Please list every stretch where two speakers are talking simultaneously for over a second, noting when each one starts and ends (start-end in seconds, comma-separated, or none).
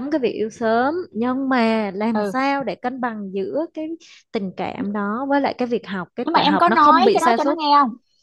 6.2-7.6